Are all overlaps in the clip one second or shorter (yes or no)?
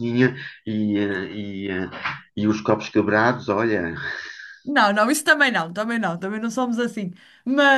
yes